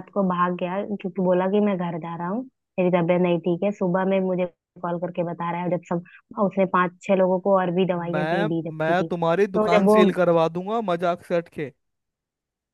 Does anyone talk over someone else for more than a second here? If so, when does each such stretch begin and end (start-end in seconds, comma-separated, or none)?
8.0-10.0